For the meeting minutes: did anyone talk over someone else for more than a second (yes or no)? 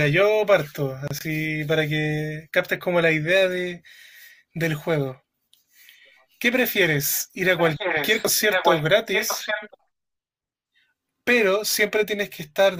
yes